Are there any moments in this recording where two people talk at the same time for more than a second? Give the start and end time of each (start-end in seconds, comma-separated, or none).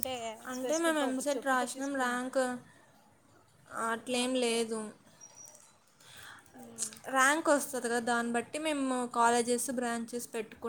0.6-2.1